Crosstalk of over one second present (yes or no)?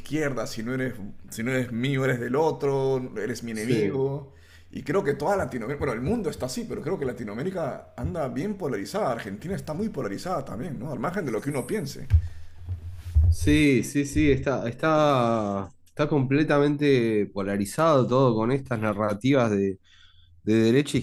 no